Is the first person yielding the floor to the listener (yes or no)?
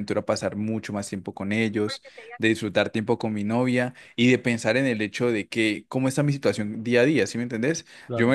no